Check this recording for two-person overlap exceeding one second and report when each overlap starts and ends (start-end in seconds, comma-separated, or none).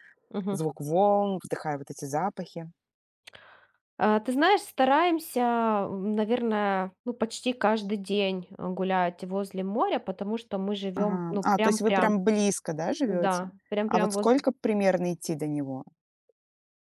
10.9-12.1, 13.0-14.4